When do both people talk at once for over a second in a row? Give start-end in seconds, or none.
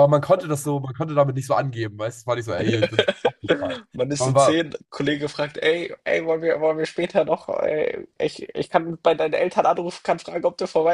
none